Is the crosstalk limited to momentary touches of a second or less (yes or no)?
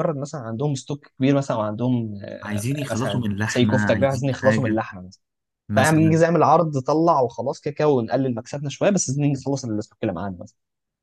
no